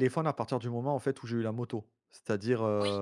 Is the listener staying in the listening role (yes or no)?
yes